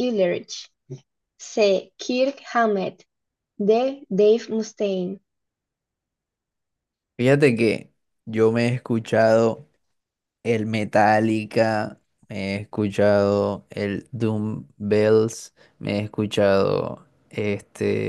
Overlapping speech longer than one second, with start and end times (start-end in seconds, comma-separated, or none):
none